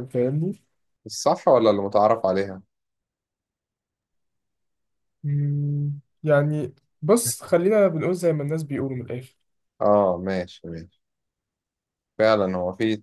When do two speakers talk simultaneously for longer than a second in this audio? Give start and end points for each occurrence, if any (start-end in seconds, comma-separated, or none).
none